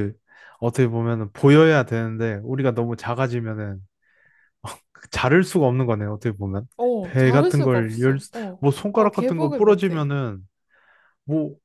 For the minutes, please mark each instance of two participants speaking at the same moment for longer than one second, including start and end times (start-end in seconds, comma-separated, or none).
6.8-10.1